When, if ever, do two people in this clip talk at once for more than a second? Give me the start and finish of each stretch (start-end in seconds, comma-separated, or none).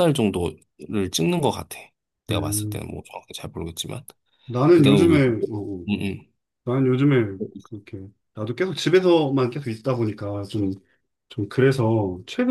none